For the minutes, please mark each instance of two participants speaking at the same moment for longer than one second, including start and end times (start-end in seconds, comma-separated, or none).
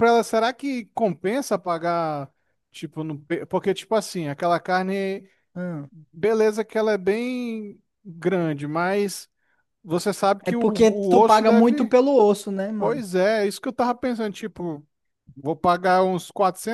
10.5-11.9